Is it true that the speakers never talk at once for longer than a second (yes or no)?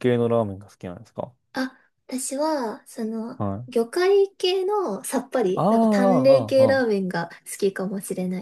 no